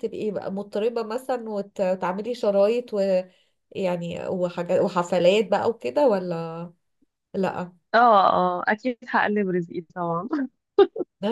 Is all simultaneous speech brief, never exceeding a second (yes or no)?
yes